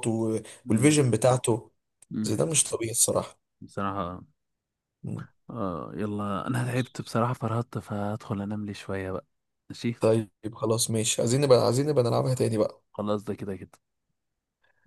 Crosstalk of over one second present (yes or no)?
no